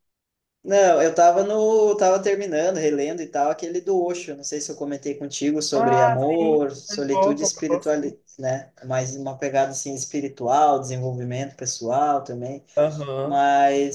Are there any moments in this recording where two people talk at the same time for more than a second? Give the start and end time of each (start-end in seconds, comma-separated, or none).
5.7-8.1